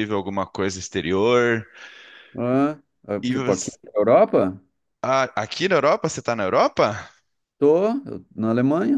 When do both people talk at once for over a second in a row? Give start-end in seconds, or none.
none